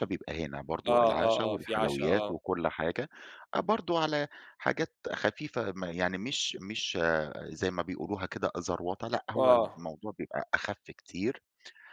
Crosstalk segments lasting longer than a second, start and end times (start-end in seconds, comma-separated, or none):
0.9-2.4